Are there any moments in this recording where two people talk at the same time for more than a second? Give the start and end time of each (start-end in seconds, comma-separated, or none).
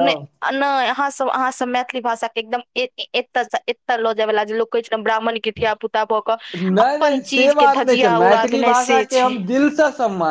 6.8-9.3